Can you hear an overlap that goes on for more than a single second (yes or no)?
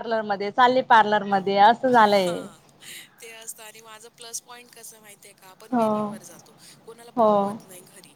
no